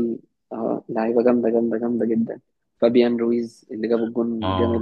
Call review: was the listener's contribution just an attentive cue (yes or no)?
no